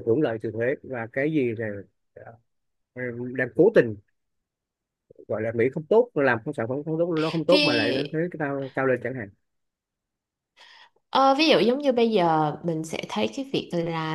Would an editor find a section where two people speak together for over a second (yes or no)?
no